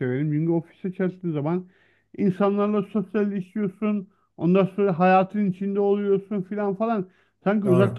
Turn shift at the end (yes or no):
no